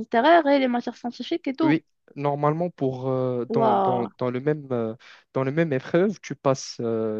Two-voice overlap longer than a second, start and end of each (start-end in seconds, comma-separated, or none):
none